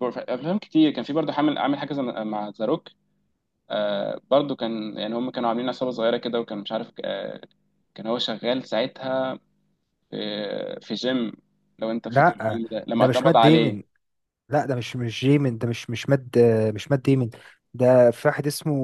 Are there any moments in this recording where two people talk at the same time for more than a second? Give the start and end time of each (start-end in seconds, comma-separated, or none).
12.1-13.8